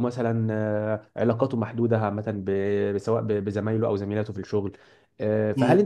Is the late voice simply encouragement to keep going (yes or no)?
yes